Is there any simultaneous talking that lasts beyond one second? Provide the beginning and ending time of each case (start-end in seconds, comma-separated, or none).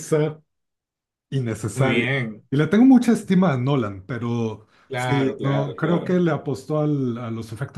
4.9-6.2